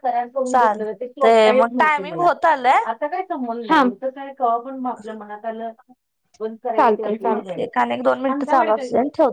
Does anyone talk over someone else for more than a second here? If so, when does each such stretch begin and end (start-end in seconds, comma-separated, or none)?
0.5-2.3